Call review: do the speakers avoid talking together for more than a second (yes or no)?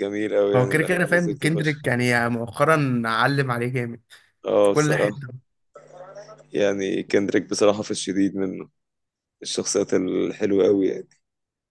no